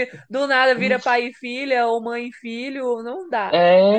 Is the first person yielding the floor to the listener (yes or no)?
yes